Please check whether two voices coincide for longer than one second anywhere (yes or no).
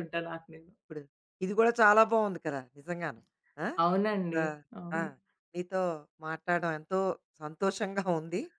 no